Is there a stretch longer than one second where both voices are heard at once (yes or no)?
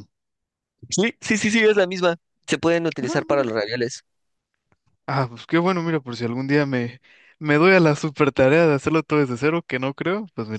no